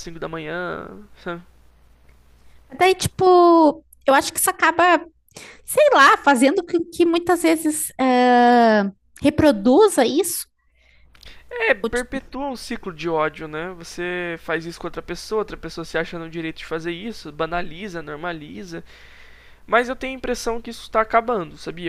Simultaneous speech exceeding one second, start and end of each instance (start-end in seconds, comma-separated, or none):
none